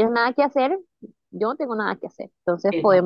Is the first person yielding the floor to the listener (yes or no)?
no